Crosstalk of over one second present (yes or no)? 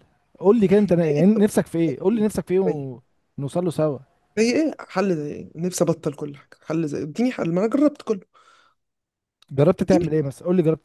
no